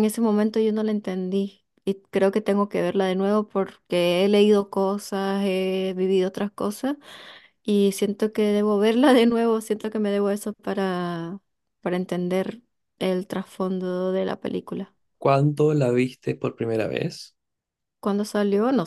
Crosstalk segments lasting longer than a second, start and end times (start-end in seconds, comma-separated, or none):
none